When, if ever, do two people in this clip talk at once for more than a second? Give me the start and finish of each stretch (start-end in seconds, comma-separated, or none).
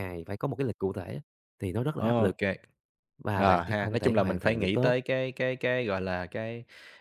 3.4-4.9